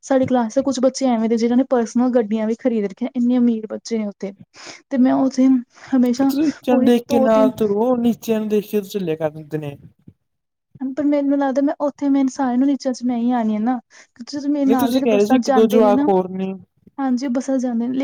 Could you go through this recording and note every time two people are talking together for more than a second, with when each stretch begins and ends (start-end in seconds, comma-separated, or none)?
14.5-16.1